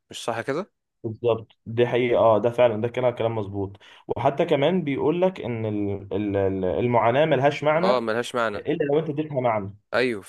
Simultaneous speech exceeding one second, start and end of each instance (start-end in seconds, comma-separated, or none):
none